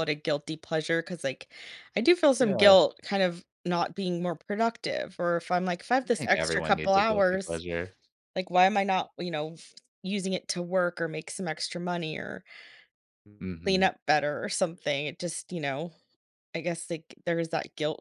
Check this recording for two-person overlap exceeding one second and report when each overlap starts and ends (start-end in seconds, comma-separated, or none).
6.1-7.6